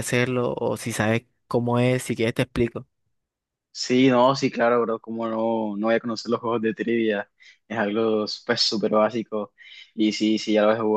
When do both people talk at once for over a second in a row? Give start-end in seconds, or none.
none